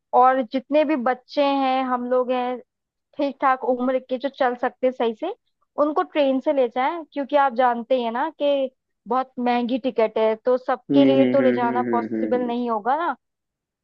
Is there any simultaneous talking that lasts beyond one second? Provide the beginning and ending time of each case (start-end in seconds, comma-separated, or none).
10.9-12.5